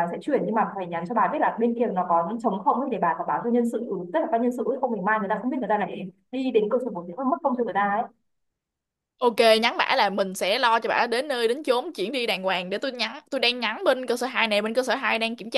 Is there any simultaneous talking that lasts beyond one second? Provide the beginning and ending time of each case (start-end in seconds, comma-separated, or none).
none